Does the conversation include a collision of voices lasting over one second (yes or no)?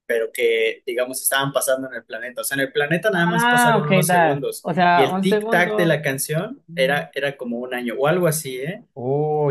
yes